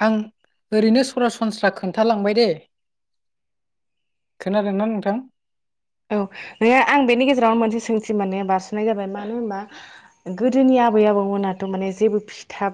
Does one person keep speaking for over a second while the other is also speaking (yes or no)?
no